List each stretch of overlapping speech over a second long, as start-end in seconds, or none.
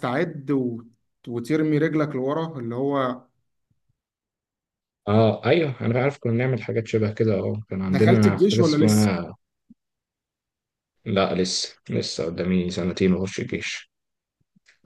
7.8-9.1